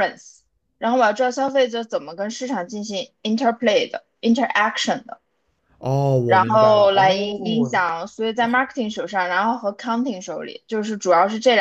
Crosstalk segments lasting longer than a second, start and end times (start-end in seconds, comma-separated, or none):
6.3-7.8